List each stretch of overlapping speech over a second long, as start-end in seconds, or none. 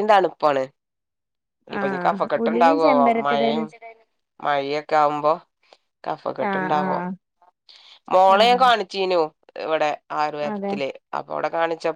1.8-3.6